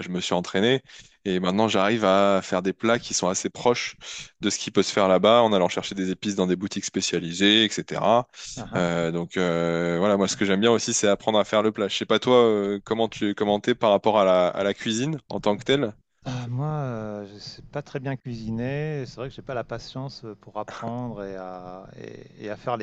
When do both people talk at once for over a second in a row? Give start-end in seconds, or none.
none